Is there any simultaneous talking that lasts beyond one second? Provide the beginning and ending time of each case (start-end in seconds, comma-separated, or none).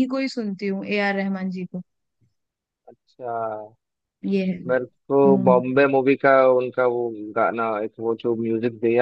none